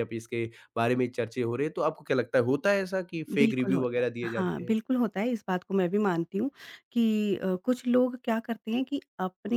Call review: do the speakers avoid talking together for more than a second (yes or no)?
no